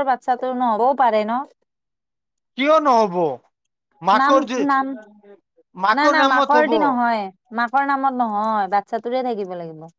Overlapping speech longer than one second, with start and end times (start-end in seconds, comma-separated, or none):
none